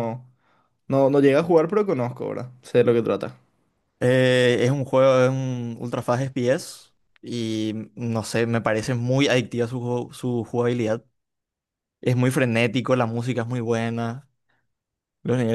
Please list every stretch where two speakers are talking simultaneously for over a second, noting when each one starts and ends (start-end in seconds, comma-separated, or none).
none